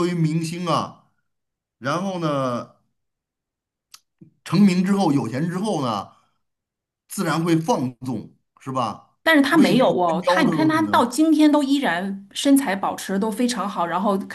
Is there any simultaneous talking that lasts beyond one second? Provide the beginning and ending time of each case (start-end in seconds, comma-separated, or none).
9.5-11.1